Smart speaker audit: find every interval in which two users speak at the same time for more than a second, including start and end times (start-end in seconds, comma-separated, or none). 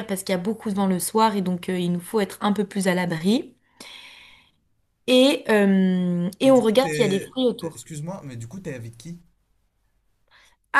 6.4-7.8